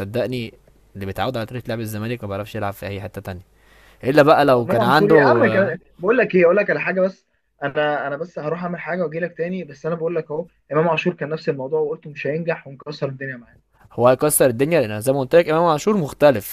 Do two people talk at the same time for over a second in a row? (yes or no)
yes